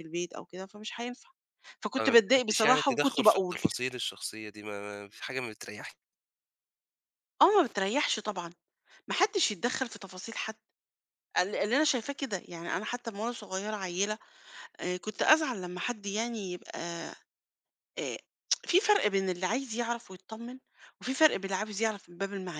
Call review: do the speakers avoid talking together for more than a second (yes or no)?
no